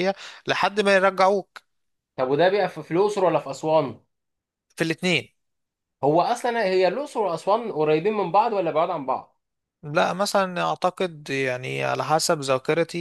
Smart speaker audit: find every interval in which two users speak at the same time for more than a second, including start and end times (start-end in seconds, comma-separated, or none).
none